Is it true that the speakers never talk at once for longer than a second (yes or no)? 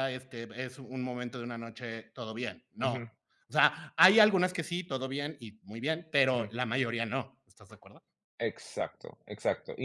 yes